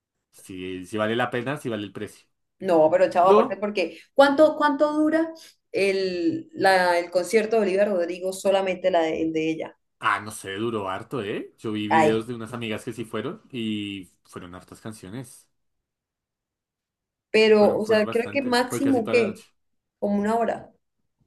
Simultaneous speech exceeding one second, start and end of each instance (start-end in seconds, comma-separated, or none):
17.6-19.4